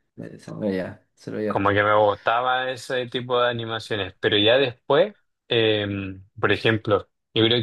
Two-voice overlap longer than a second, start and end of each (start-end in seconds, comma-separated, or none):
none